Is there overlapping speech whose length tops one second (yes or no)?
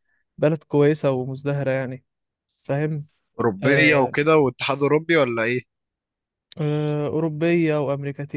no